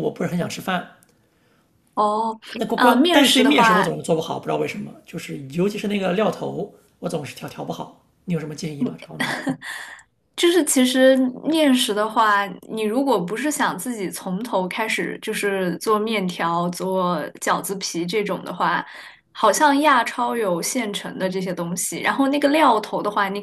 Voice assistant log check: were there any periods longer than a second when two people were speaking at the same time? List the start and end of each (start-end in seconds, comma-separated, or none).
2.8-4.0